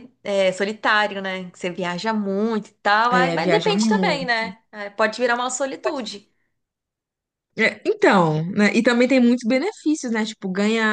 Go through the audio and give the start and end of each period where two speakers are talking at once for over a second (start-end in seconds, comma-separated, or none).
3.1-4.3